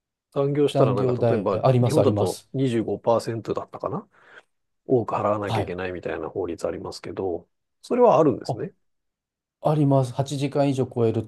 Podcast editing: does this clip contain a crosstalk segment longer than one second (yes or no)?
yes